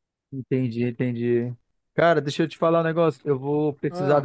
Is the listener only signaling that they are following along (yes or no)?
yes